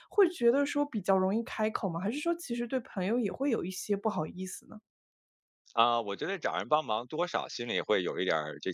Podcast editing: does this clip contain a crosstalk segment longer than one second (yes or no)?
no